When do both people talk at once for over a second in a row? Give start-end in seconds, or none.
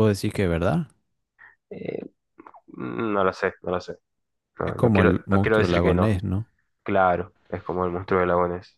4.6-6.2